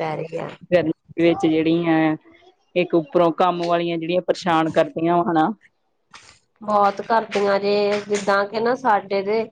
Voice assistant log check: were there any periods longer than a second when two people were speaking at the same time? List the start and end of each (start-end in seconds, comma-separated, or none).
none